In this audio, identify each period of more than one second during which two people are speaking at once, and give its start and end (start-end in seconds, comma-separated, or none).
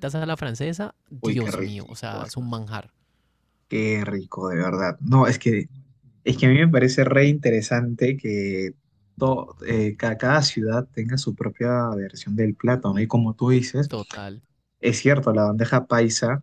1.2-2.6